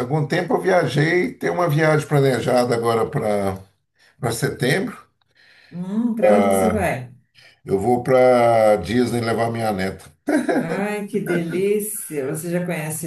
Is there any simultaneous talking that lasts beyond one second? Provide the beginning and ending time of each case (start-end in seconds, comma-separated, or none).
none